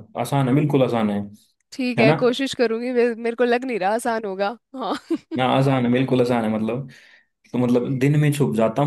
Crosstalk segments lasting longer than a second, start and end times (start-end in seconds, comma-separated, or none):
none